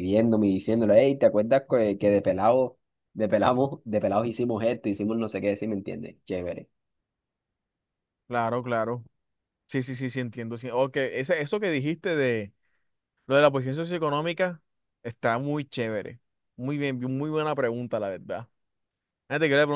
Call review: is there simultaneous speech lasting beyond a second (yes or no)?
no